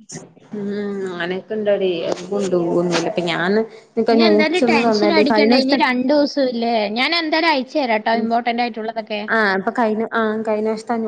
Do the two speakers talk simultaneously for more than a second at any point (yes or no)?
no